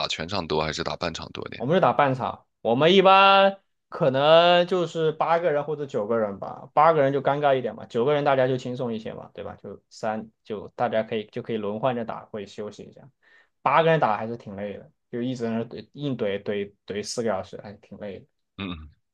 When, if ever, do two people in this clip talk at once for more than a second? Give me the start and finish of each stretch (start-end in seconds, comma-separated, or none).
none